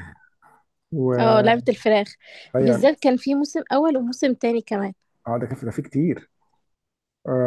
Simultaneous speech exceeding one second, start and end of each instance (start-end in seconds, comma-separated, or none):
none